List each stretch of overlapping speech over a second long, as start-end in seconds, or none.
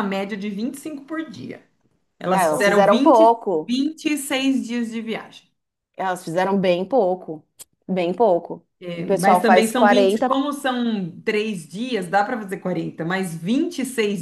2.3-3.8, 8.8-10.3